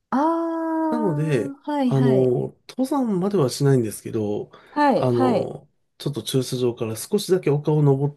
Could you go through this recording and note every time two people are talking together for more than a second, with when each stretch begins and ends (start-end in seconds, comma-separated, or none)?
0.9-2.3